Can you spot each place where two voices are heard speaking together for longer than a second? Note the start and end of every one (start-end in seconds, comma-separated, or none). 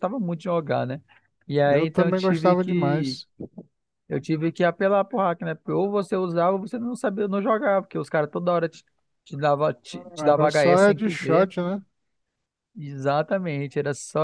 1.6-3.2, 10.2-11.5